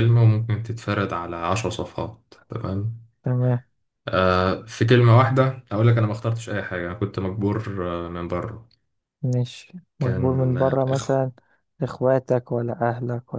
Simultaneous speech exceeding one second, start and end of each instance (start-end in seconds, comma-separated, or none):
10.0-11.2